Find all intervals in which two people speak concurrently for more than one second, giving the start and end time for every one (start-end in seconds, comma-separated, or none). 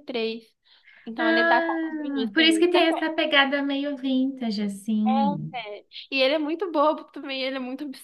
1.2-3.1